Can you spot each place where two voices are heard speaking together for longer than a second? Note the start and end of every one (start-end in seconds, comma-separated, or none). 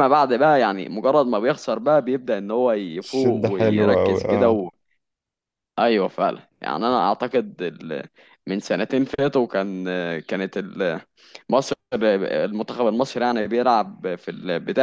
3.0-4.6